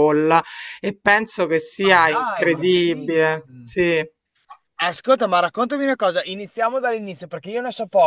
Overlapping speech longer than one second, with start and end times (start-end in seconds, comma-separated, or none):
1.8-3.8